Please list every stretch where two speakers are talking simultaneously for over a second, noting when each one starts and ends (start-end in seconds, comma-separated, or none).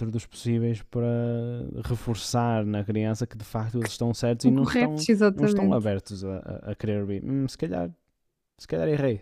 4.3-5.9